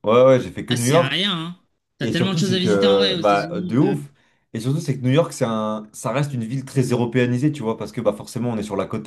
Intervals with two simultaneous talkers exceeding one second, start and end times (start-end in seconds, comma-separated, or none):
2.0-3.9